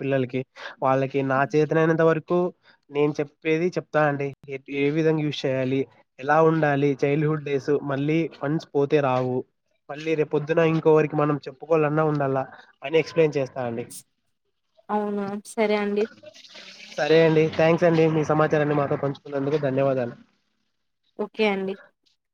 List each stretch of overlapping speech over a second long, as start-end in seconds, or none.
none